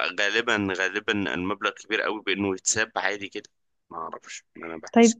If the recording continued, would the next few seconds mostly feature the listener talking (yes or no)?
yes